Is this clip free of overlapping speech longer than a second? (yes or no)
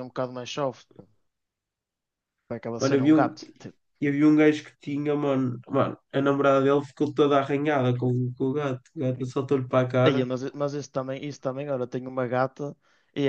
yes